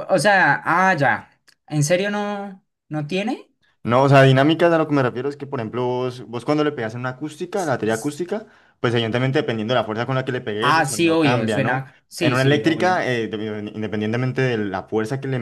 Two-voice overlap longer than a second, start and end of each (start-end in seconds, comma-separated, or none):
10.6-13.1